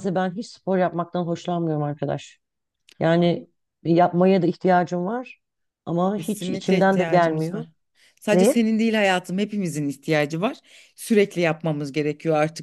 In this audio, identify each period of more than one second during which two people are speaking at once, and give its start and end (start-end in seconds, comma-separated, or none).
6.2-7.7